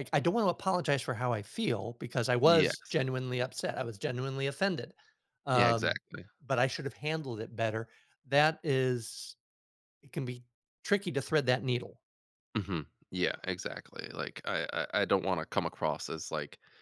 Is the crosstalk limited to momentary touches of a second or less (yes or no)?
yes